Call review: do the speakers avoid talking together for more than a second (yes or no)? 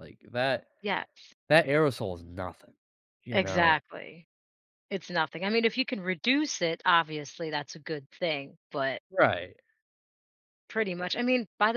yes